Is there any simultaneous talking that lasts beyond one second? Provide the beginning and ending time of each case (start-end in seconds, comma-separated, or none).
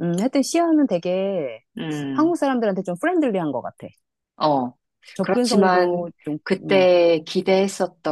5.2-6.9